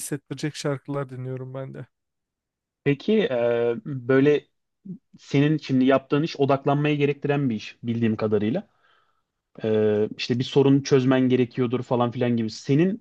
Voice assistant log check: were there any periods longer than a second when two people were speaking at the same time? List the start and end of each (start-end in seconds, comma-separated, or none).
none